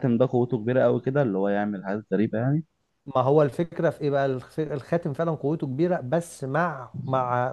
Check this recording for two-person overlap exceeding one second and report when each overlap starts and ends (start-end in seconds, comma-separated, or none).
none